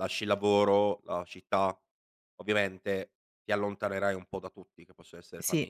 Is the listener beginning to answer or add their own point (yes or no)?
no